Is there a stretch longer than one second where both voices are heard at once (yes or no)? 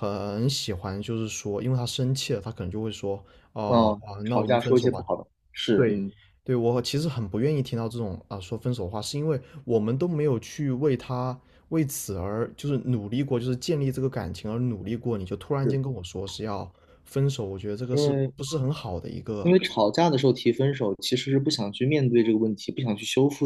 yes